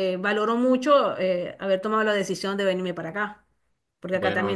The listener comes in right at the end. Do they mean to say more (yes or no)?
no